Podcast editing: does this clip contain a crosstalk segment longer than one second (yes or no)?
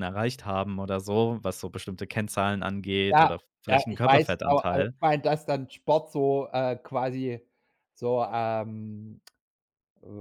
yes